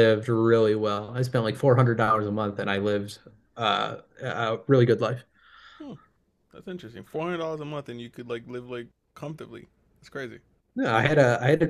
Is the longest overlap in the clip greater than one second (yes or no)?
no